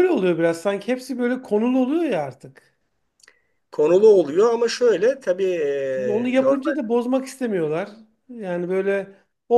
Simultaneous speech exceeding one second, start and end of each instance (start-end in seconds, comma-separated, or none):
none